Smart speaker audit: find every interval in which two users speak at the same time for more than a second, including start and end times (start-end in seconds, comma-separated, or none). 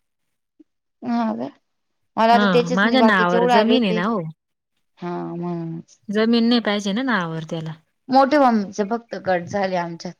2.3-4.0